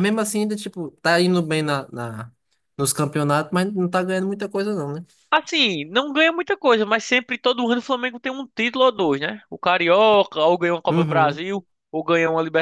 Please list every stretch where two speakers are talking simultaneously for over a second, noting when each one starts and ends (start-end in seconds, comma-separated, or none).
none